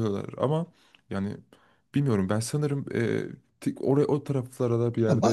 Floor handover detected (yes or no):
yes